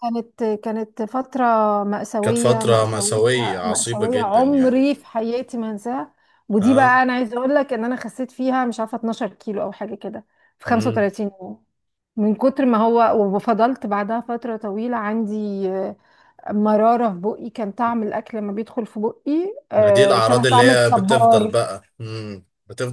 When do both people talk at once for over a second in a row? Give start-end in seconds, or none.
2.2-4.8, 19.8-21.5